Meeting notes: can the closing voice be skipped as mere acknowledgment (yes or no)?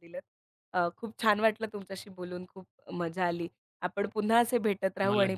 yes